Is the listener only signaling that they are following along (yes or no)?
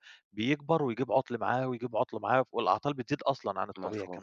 no